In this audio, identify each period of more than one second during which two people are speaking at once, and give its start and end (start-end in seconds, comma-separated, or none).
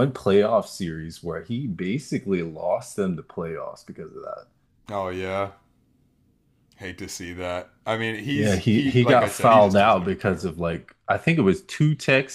8.3-10.5